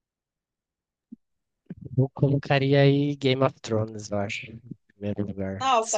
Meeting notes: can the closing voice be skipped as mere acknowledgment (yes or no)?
no